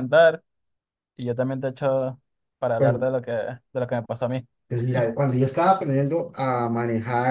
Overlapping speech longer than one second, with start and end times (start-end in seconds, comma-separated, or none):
none